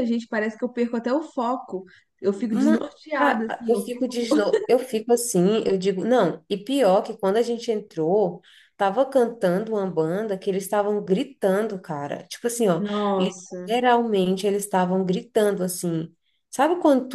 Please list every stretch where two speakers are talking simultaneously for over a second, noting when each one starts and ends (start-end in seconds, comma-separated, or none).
2.5-4.1